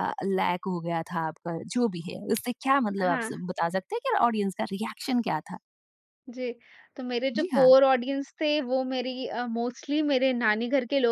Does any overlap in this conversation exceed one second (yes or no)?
no